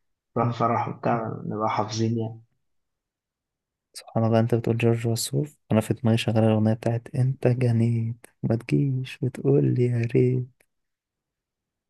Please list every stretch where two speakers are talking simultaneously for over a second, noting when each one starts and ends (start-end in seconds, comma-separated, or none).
none